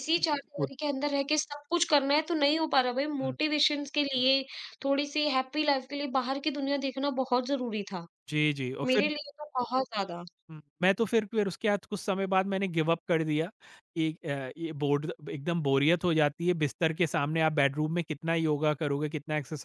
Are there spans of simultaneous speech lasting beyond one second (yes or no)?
no